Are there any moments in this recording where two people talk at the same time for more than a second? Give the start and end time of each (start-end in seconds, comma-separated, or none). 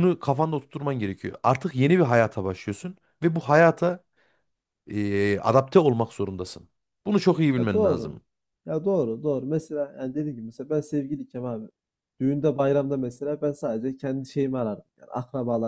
none